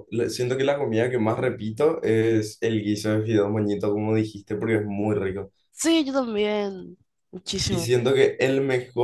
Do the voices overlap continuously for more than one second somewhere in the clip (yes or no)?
no